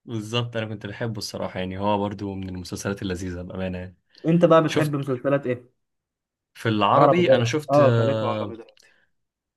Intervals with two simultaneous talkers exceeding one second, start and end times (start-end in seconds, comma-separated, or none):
6.9-8.6